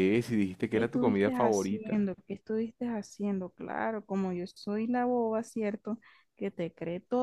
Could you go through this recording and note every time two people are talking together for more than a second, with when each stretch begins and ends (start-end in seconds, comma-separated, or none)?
0.7-2.1